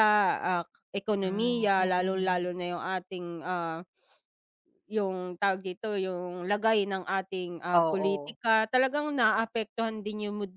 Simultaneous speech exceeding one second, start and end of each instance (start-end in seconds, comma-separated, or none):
1.2-2.5